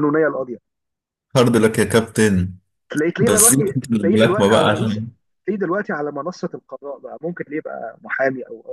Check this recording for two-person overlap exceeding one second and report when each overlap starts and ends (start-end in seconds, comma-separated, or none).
3.2-5.0